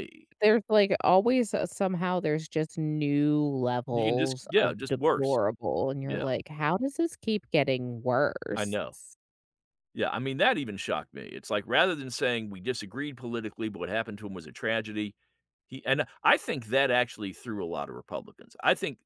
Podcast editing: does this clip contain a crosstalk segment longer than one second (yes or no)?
yes